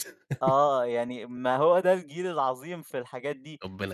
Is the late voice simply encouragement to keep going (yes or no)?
yes